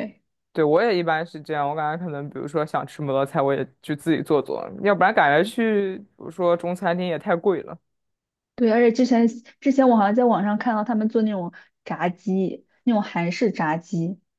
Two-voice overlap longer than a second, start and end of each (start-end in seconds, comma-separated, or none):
none